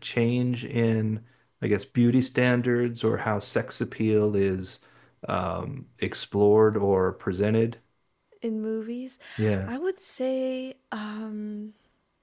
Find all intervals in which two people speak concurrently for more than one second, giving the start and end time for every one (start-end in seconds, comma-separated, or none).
none